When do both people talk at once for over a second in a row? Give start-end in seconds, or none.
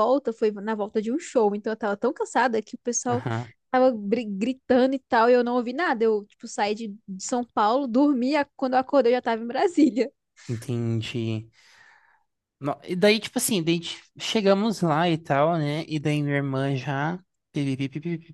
none